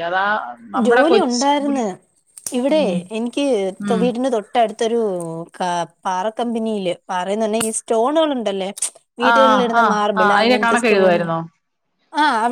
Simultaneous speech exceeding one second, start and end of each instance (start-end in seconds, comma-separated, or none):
9.3-11.2